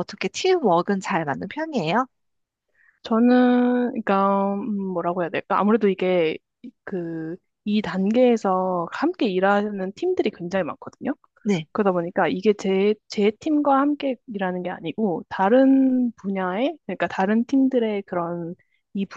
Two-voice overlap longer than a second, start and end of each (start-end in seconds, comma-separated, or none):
none